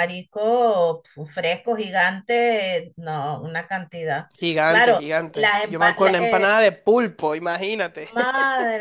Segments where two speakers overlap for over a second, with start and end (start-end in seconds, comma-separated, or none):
4.6-6.5